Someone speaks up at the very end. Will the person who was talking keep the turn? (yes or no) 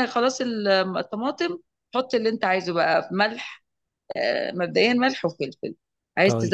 yes